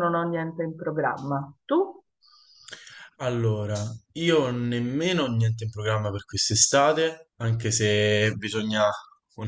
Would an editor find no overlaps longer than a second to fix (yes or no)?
yes